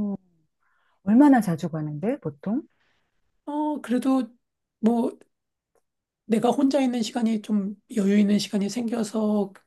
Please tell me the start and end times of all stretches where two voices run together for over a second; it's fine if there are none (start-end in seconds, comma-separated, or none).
none